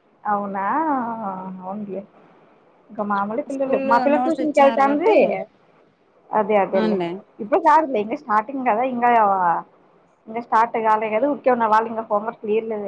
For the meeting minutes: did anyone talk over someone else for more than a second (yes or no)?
yes